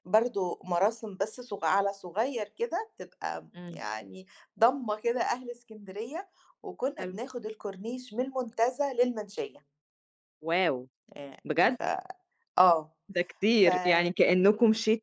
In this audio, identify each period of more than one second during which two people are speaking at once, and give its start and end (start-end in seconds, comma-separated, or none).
none